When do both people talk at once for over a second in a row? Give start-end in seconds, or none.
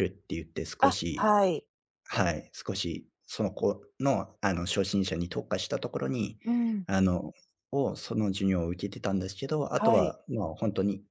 none